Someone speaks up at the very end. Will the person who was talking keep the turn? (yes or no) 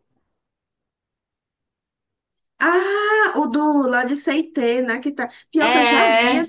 yes